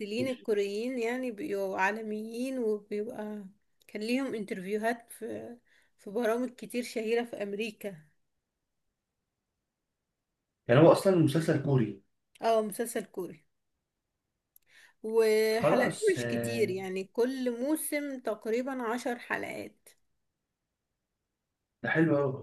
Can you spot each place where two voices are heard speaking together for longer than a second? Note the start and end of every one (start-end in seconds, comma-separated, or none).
15.5-16.8